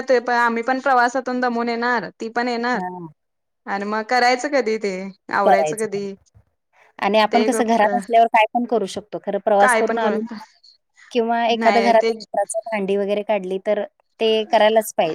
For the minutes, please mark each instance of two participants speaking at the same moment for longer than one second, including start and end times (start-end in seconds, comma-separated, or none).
none